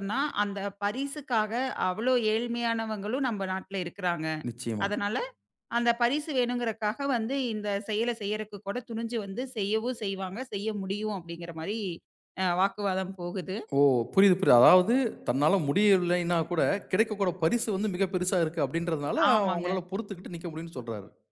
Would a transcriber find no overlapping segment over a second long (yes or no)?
yes